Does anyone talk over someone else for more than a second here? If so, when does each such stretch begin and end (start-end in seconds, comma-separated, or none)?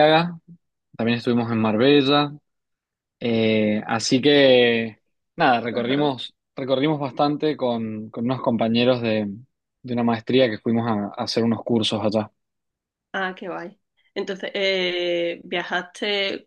none